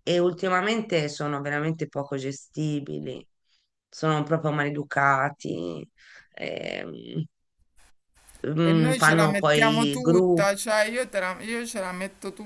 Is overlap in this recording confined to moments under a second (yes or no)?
no